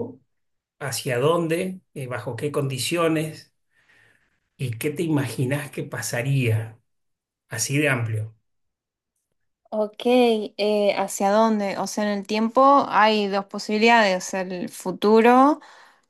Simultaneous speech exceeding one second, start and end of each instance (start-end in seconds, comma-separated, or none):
none